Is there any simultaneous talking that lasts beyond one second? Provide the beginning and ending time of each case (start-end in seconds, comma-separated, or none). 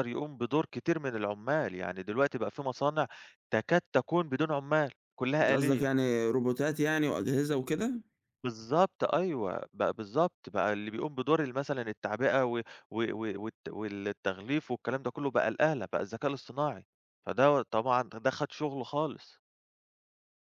none